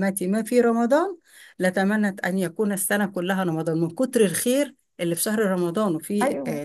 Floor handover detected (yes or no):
yes